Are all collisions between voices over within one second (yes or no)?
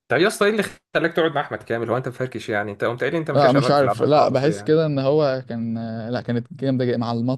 no